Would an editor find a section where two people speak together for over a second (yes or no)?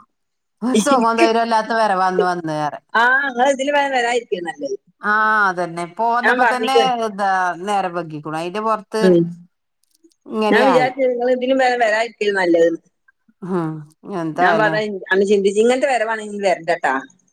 no